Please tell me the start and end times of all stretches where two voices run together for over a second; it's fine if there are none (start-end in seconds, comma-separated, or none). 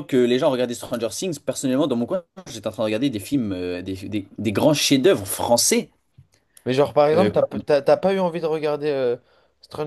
none